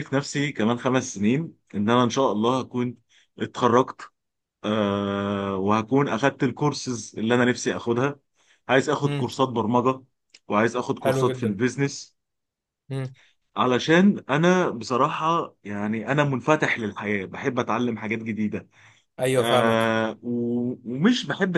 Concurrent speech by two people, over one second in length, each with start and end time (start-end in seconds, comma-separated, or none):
none